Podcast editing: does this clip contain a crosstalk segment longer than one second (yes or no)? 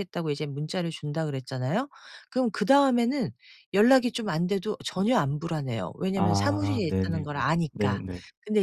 yes